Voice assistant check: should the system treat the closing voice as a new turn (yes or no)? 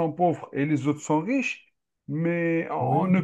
no